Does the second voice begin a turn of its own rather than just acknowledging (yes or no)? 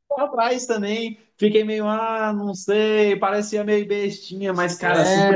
yes